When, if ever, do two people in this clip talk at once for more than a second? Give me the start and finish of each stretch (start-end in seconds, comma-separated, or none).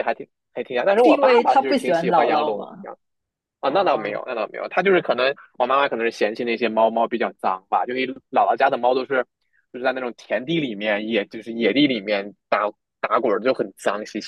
0.9-2.9